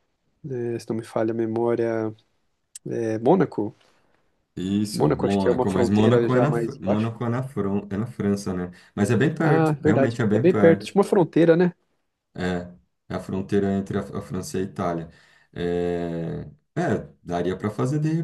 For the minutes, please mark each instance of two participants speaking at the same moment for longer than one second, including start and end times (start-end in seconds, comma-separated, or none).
4.9-7.1, 9.4-11.0